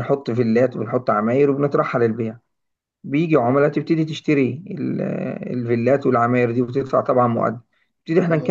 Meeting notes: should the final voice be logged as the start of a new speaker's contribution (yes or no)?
no